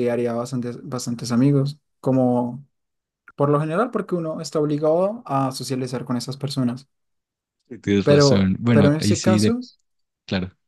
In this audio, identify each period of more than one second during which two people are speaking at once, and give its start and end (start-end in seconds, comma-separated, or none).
8.0-9.5